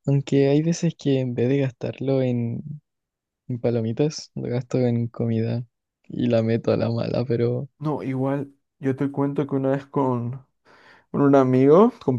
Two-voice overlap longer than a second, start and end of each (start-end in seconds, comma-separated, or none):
none